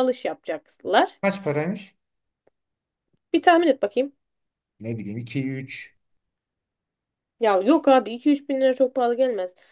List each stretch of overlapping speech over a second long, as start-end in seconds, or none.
none